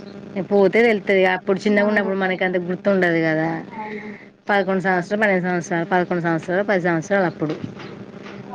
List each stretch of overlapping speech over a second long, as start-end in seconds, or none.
0.7-2.1